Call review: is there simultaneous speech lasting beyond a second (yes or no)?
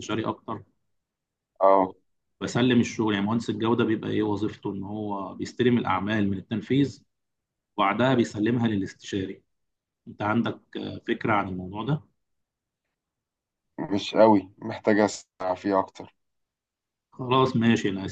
no